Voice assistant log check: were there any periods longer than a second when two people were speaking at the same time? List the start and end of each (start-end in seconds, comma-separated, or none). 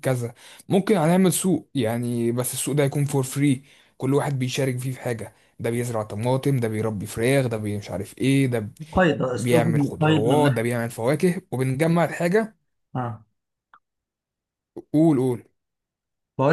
9.3-10.7